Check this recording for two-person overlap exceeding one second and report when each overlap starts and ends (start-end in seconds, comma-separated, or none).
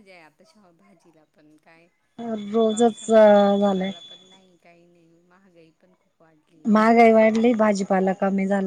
2.7-3.9